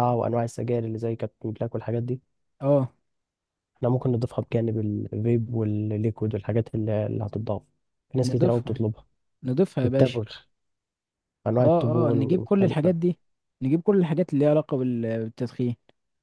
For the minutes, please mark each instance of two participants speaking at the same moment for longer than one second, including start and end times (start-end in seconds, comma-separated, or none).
11.6-12.9